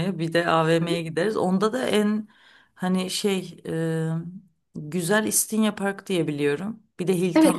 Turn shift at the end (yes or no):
yes